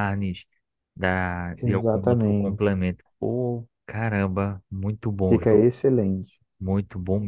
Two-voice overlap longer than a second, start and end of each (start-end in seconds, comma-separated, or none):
1.6-2.8